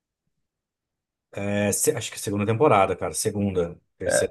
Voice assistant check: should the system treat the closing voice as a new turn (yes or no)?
yes